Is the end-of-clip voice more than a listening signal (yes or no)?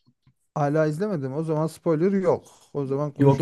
yes